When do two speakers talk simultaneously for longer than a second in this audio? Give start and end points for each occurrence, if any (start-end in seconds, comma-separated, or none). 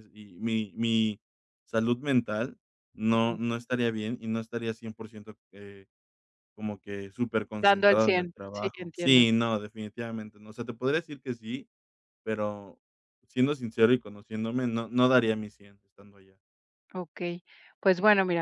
7.6-9.2